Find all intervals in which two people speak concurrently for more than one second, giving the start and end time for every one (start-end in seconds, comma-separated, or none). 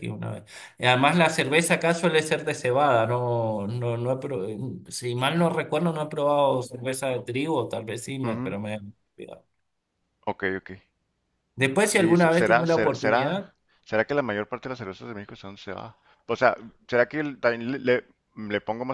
11.8-13.4